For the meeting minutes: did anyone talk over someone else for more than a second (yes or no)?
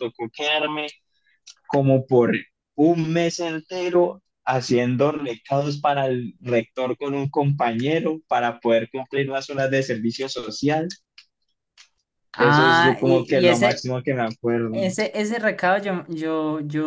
yes